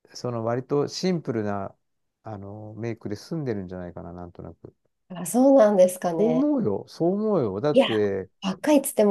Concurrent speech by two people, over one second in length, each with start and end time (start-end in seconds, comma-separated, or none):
none